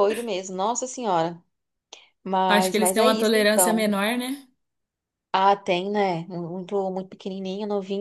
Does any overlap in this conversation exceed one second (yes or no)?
yes